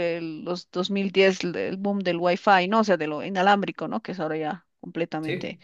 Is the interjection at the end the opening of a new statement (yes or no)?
no